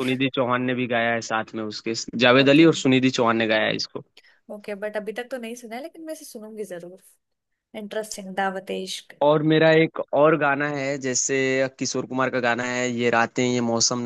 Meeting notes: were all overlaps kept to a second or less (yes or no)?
yes